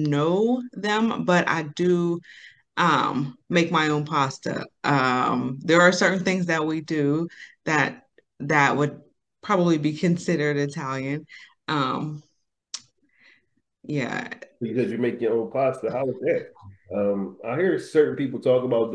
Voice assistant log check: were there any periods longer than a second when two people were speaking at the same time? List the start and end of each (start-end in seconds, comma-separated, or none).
none